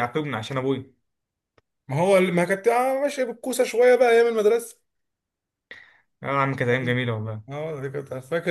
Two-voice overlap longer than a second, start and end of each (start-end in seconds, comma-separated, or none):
none